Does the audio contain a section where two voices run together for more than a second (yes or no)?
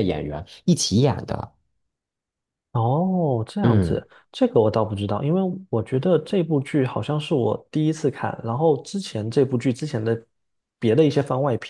no